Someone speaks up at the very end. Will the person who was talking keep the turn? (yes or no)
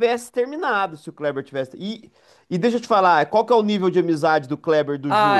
no